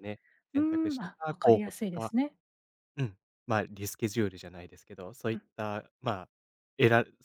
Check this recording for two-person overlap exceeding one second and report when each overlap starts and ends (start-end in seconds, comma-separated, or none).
0.6-2.1